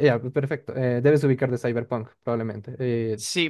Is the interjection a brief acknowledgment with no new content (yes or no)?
no